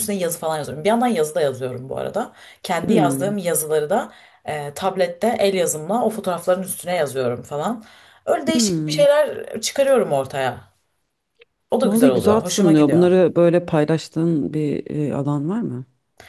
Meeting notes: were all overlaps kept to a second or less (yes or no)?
no